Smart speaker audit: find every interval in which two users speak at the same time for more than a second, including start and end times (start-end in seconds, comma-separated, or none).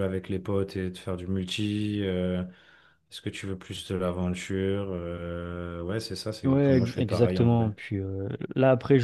6.4-7.7